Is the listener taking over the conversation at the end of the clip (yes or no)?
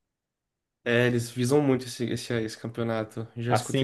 yes